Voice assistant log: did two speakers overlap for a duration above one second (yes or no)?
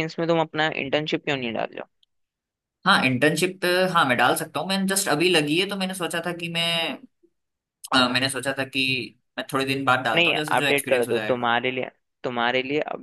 yes